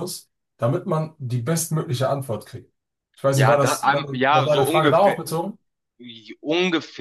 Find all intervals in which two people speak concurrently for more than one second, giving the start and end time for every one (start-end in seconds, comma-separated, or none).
3.3-5.2